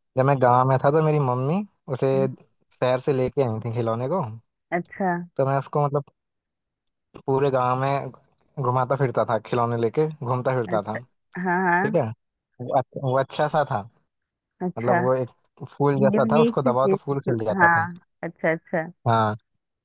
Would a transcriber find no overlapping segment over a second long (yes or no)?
no